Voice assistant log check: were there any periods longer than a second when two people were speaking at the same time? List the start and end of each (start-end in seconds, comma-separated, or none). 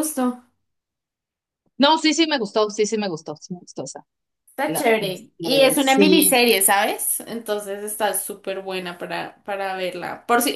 4.7-6.4